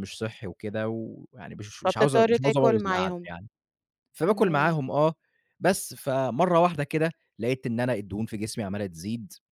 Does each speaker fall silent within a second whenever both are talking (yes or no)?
no